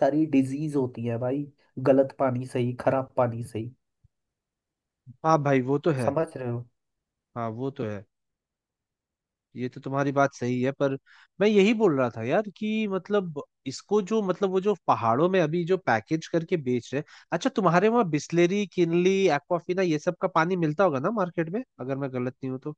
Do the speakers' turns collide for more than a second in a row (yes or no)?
no